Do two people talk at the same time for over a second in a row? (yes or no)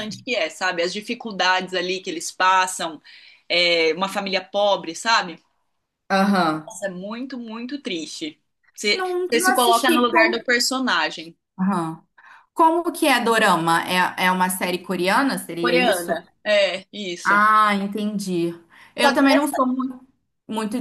yes